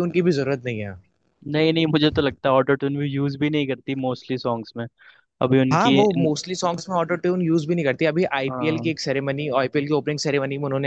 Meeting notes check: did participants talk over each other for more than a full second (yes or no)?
no